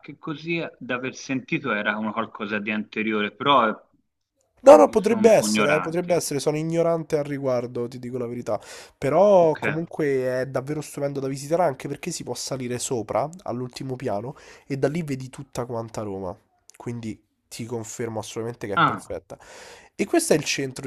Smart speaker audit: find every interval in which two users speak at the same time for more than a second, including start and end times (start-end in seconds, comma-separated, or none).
4.7-6.3